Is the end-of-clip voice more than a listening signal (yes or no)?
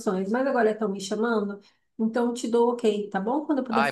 yes